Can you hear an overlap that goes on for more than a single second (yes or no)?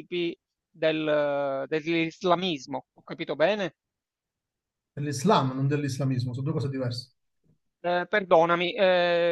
no